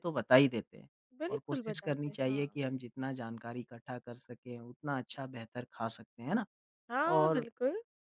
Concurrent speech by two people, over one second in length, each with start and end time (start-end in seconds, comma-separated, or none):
1.3-2.6